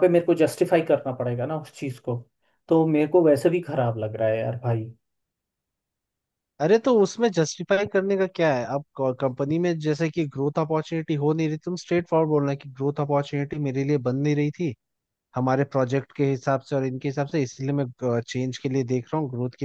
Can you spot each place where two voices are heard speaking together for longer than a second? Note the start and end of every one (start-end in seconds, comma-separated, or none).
none